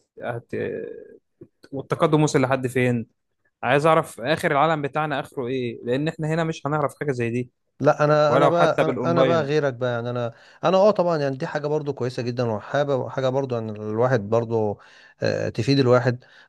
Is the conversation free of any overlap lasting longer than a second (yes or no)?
no